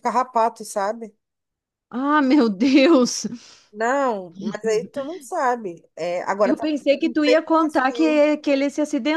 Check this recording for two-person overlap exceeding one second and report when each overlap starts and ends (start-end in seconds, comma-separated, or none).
6.4-8.2